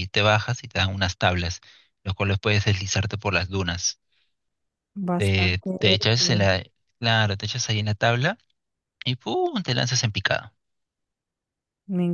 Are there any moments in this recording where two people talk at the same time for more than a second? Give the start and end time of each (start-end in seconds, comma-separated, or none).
5.2-6.5